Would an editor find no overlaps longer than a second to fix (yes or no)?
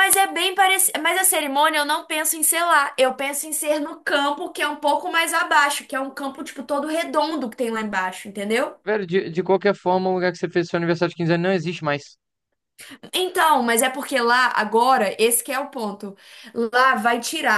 yes